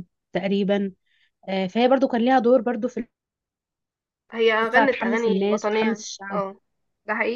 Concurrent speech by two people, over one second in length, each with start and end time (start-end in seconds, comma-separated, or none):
4.6-6.4